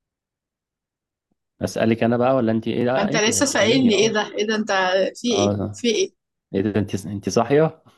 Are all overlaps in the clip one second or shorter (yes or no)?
no